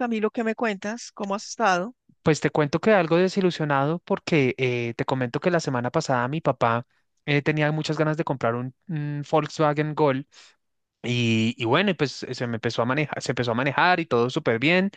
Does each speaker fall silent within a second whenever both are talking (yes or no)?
yes